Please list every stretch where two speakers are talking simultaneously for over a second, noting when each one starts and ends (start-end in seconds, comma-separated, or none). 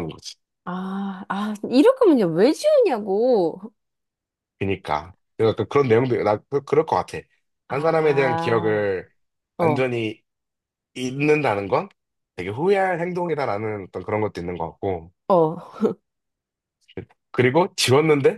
7.7-8.9